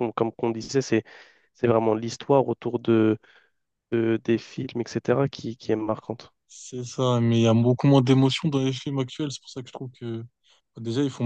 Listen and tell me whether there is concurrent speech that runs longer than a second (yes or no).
no